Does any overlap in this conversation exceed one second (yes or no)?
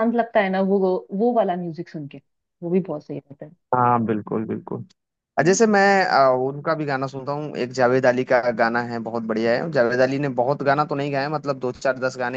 no